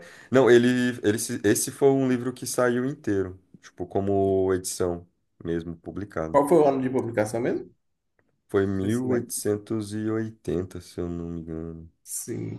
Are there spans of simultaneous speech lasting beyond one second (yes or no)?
no